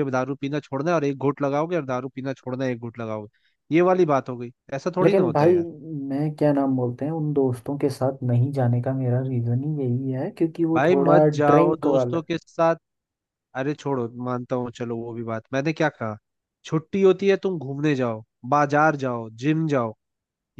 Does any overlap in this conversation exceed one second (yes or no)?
yes